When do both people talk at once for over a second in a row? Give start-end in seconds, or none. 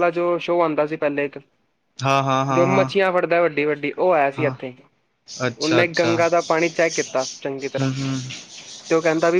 none